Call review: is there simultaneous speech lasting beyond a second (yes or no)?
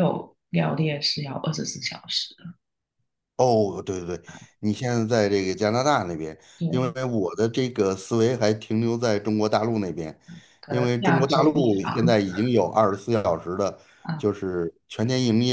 yes